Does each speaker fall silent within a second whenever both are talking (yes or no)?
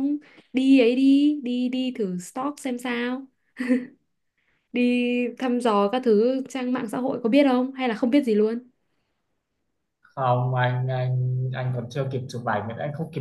yes